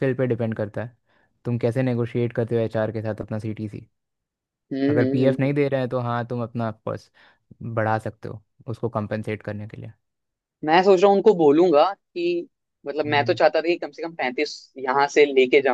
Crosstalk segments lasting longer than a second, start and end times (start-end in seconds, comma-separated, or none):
none